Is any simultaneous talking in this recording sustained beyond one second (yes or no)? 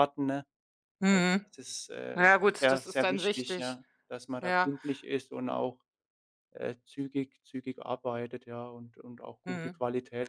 yes